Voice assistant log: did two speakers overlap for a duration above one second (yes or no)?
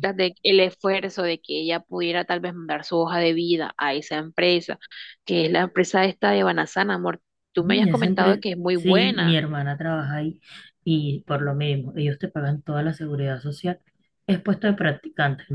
yes